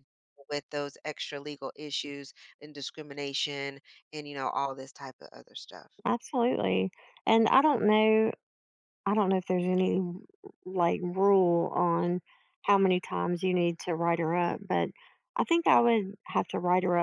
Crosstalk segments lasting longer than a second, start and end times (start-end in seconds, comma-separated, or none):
none